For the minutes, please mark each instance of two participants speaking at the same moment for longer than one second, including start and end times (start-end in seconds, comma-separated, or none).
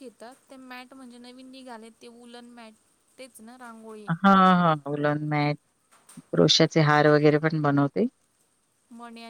none